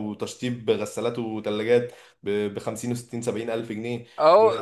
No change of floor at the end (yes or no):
no